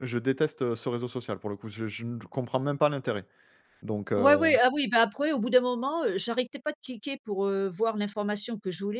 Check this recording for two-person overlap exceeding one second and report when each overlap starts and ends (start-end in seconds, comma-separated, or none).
none